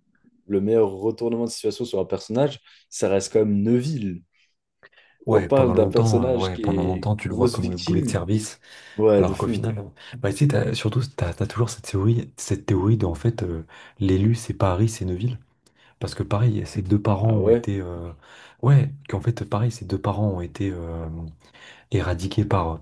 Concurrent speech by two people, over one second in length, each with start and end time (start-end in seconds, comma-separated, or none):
5.3-8.2